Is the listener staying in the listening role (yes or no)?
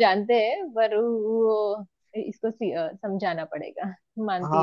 no